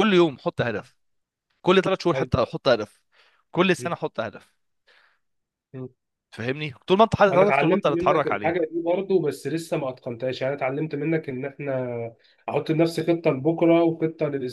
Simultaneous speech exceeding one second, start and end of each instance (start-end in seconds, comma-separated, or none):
7.3-8.7